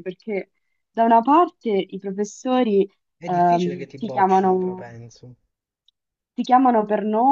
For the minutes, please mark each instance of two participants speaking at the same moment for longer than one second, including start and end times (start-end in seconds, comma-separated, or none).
3.2-4.9